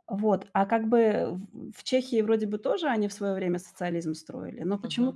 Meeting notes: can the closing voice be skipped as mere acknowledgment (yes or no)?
yes